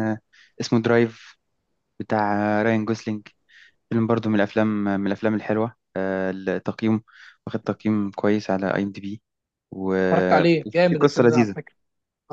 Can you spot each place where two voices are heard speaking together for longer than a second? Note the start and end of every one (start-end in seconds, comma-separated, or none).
10.1-11.5